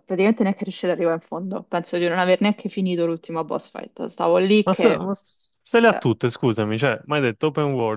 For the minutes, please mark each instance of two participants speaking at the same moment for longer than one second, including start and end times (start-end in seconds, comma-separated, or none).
none